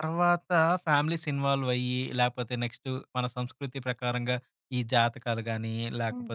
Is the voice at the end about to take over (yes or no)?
no